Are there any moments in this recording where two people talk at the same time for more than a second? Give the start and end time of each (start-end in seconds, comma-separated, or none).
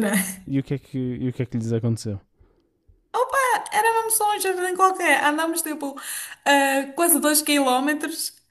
none